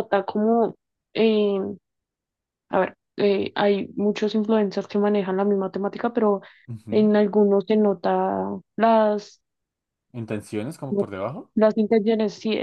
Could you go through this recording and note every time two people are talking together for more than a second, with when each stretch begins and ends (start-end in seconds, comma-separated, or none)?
none